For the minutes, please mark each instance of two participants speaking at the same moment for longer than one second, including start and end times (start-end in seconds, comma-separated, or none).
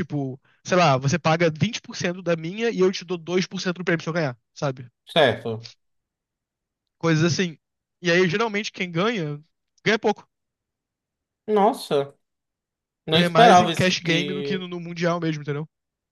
13.1-14.7